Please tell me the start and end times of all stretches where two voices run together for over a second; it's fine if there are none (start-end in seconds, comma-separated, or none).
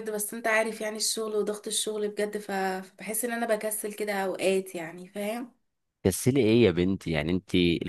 none